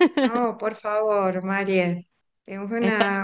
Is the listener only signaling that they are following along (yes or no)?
yes